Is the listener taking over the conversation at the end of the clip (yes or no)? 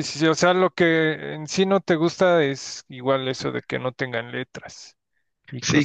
yes